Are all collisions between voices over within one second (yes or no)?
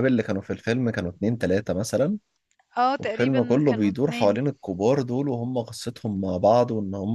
no